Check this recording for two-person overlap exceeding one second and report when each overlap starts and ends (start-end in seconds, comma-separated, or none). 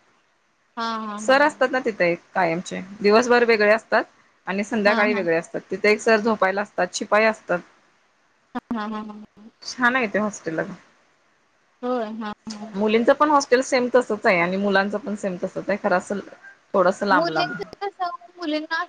none